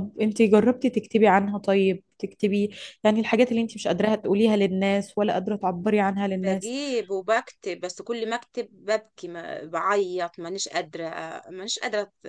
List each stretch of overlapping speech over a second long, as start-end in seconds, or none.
none